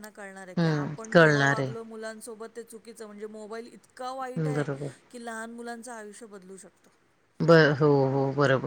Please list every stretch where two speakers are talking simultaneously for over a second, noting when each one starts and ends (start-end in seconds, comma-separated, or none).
0.6-1.9